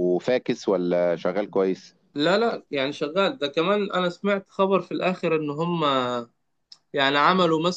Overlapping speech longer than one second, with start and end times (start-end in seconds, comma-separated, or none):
none